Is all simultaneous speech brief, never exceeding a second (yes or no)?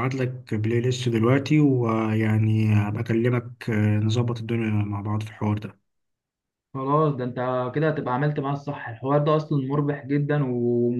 yes